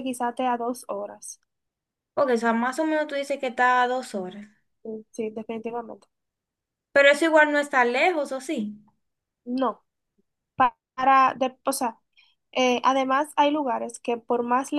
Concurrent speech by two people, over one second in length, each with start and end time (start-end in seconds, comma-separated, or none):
none